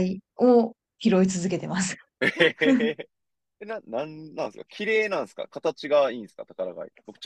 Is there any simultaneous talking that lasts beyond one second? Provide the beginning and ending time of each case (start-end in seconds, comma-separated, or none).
none